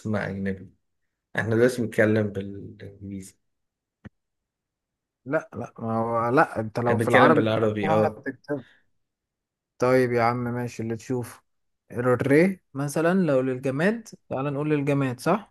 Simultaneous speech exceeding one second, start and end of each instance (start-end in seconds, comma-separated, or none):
6.9-8.3